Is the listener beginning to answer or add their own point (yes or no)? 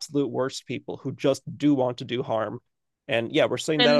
no